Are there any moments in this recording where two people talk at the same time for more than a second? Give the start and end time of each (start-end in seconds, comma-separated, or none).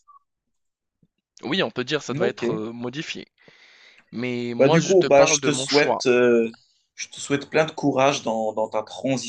4.5-6.0